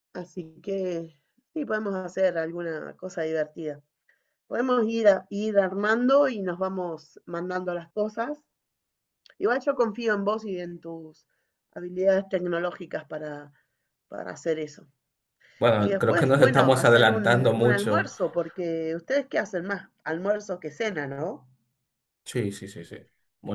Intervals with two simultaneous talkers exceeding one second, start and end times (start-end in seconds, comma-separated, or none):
15.8-18.1